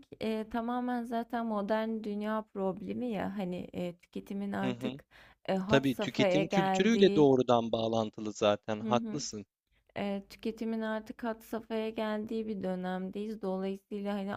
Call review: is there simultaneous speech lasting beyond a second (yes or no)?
yes